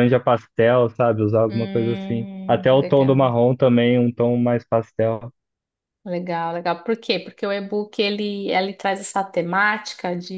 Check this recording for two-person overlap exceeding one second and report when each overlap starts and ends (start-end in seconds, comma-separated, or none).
1.5-3.3